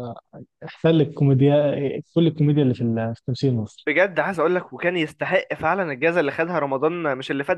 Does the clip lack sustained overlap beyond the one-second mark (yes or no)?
yes